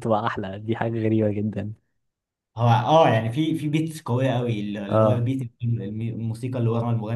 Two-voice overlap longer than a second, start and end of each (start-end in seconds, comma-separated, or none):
none